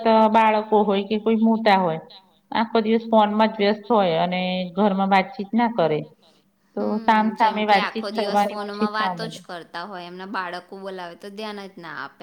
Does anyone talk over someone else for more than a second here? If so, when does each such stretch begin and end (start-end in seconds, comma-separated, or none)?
6.8-9.4